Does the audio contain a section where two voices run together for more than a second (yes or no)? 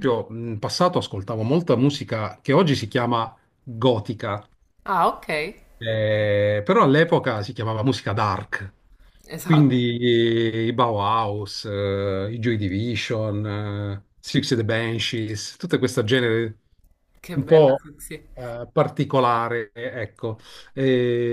no